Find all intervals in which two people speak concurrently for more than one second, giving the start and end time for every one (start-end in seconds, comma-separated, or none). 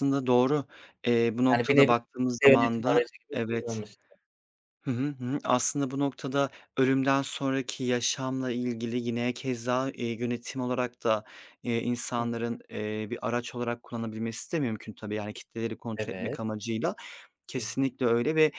1.5-3.8